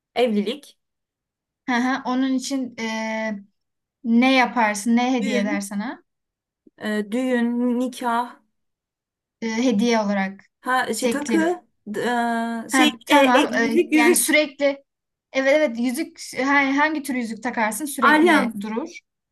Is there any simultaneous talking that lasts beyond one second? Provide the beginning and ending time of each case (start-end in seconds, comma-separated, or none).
12.7-14.4